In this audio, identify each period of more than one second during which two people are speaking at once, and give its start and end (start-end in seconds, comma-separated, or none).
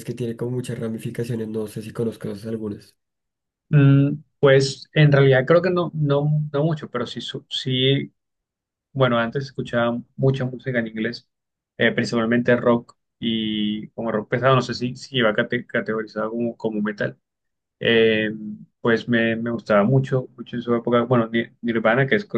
none